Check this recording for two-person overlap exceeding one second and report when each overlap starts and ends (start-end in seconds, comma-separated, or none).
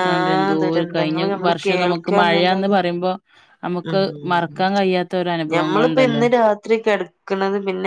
0.6-2.8